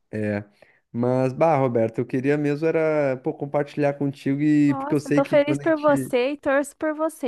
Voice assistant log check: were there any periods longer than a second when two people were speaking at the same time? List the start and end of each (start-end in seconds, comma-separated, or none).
4.7-6.1